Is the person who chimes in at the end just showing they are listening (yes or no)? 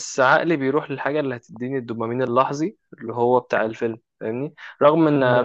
yes